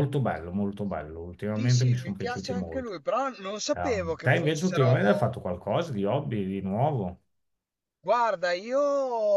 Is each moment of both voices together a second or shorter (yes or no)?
no